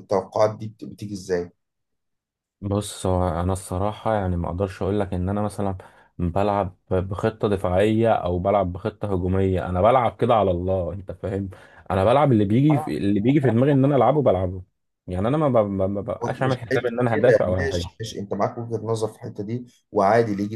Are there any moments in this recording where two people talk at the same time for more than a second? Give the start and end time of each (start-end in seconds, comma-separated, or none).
16.4-17.9